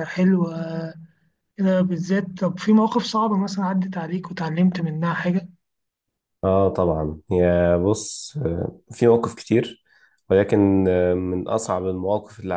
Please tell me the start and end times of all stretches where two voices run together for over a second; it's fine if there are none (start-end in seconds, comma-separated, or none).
none